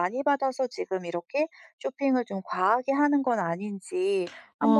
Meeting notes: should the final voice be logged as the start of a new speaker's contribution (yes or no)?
yes